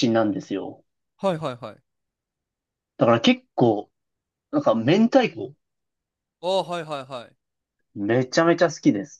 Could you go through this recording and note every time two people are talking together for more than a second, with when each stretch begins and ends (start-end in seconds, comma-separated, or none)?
none